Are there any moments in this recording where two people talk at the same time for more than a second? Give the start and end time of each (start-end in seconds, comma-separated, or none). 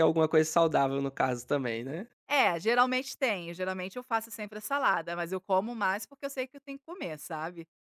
none